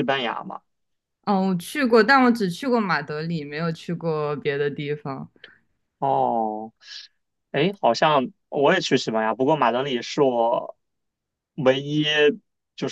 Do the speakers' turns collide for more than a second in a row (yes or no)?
no